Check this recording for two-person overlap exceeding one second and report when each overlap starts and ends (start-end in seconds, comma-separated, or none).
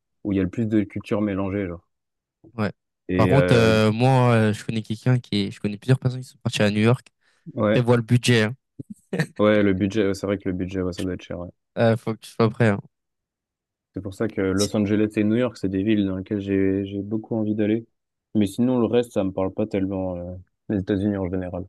none